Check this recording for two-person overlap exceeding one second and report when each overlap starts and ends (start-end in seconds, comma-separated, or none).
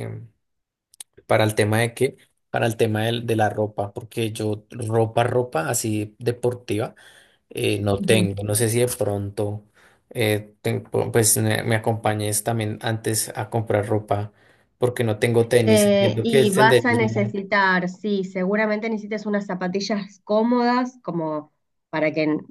15.6-17.4